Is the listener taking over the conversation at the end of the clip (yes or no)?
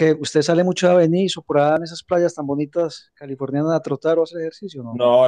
yes